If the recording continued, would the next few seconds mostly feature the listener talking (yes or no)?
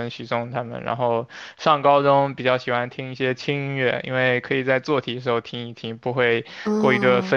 no